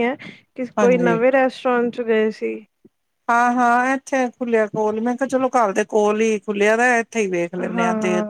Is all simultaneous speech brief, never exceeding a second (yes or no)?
yes